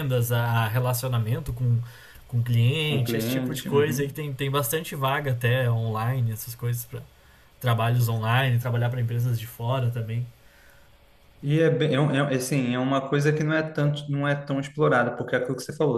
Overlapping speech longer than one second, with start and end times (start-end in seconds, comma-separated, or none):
2.8-4.1